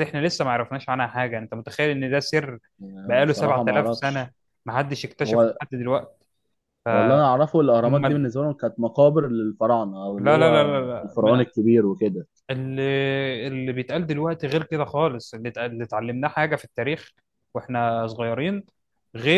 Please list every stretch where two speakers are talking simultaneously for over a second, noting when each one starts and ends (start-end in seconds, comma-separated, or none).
3.1-4.3, 10.2-11.6